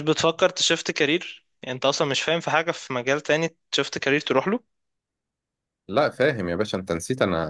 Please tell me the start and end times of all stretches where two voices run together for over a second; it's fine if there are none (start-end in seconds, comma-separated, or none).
none